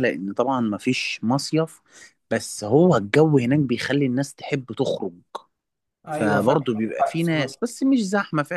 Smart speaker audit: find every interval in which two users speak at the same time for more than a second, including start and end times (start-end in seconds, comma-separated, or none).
6.1-7.6